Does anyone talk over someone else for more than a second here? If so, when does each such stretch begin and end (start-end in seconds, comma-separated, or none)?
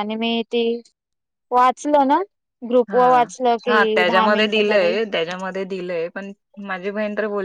3.7-4.9